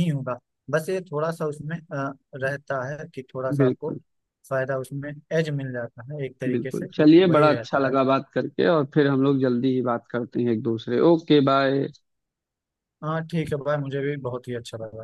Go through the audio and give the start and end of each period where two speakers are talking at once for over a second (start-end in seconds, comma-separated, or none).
6.5-7.9